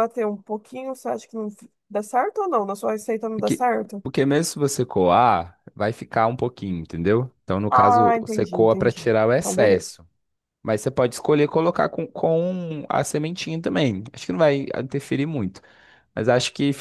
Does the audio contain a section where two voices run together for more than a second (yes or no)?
yes